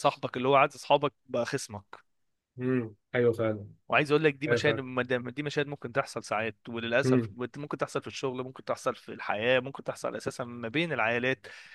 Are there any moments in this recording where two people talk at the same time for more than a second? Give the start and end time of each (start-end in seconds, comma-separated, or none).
none